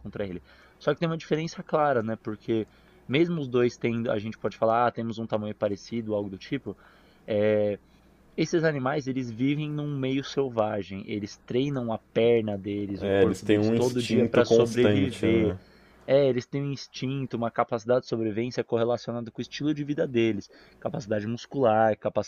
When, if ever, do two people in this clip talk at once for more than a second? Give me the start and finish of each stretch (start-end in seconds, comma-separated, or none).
13.0-15.6